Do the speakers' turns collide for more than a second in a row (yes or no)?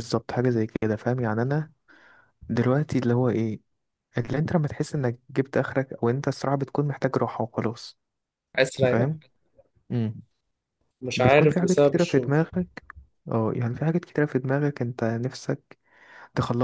yes